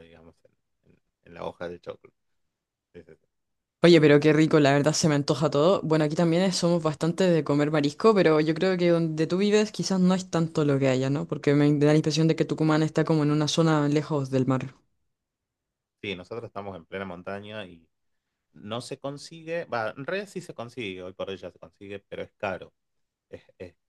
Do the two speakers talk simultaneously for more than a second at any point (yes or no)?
no